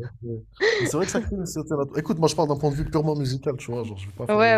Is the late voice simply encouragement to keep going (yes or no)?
no